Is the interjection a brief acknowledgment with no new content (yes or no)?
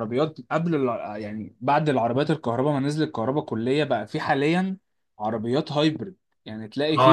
no